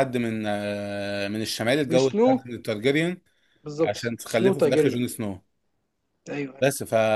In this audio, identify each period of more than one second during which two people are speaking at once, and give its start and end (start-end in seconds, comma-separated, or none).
3.8-5.0